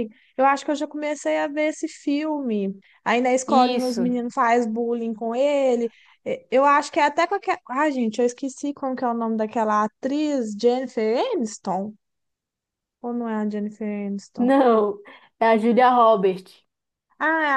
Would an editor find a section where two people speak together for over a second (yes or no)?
no